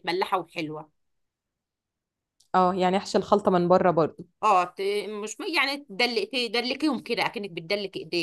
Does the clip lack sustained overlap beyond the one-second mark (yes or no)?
yes